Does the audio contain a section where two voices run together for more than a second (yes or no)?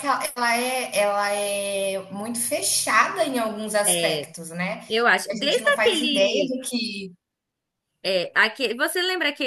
yes